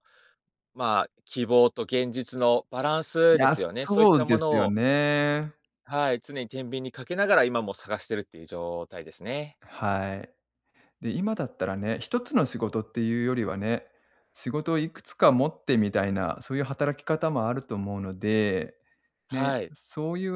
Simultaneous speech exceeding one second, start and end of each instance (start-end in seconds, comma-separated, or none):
3.3-4.7